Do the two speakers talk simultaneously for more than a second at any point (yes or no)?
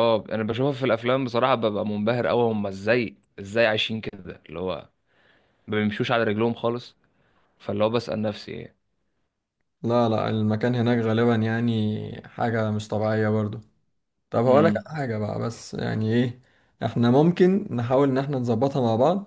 no